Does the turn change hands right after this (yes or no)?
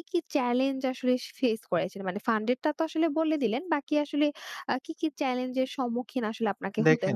yes